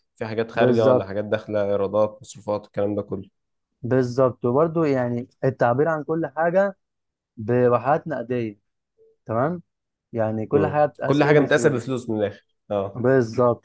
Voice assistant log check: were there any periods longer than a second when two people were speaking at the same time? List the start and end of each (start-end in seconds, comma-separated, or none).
10.5-12.0